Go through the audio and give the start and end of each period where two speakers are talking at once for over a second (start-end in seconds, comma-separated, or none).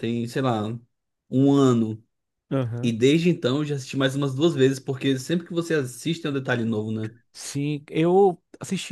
none